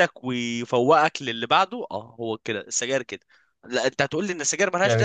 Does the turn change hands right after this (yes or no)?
no